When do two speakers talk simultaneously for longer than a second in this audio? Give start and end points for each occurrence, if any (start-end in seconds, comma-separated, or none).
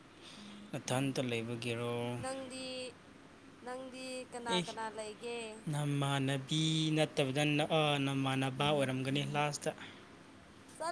none